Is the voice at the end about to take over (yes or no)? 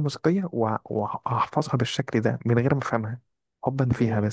yes